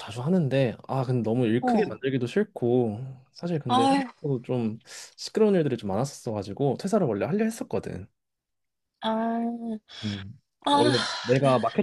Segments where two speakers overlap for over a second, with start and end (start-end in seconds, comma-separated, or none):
none